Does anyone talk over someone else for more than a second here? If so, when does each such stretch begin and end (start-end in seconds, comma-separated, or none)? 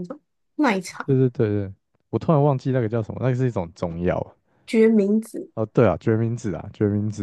none